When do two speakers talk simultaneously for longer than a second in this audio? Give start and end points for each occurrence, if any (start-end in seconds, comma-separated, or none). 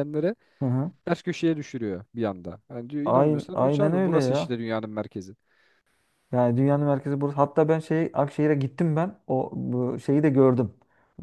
3.0-4.5